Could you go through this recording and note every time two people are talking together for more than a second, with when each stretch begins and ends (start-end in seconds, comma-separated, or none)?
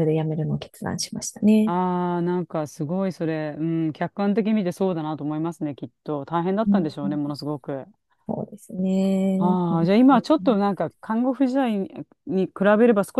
none